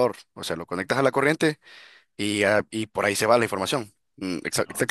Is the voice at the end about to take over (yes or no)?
no